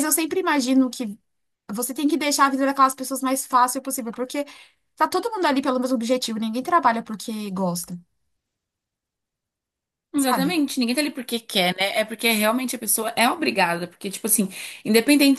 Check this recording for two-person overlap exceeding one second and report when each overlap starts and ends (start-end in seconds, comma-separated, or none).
none